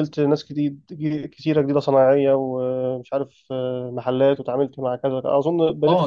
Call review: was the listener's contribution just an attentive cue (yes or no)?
no